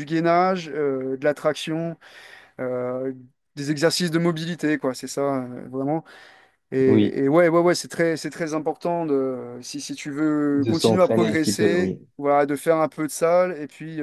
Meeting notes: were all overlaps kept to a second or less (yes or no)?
no